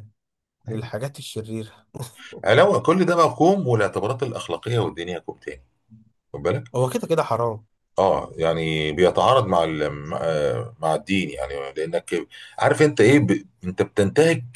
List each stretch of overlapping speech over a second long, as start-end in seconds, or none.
none